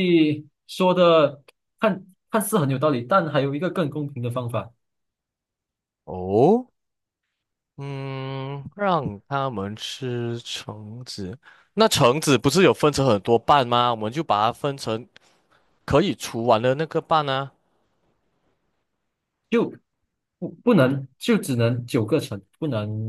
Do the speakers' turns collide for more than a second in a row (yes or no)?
no